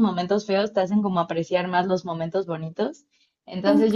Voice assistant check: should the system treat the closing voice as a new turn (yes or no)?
no